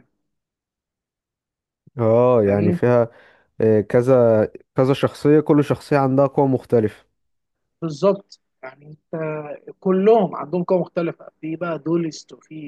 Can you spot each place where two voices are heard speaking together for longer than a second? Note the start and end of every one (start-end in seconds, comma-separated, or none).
none